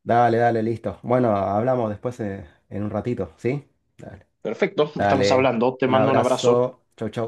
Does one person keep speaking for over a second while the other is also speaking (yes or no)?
yes